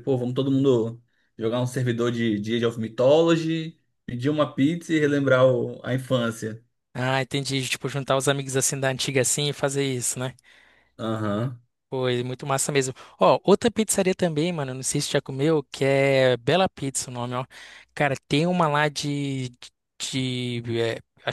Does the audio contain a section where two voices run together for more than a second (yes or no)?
no